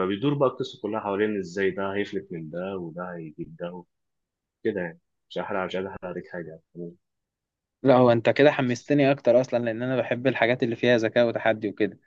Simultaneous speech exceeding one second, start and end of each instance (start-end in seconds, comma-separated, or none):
none